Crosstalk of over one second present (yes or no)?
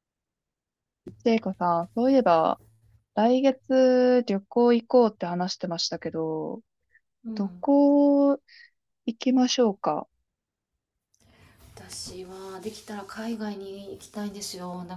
no